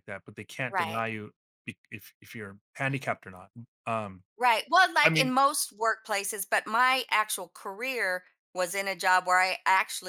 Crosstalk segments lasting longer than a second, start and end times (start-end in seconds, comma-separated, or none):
none